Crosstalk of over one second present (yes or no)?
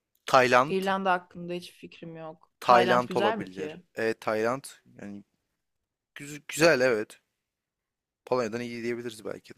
yes